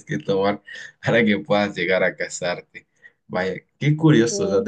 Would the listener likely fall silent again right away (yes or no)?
yes